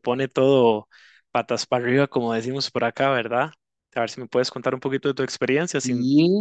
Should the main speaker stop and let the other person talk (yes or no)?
yes